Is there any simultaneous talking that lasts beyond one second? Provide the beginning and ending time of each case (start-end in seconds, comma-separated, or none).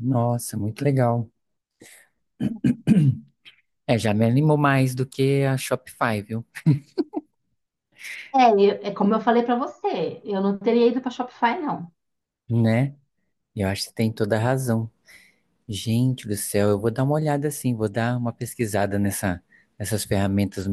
none